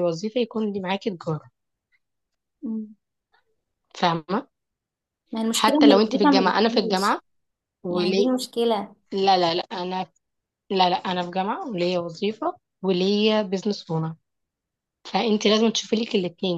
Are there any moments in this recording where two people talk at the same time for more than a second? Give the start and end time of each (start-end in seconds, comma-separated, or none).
5.5-7.1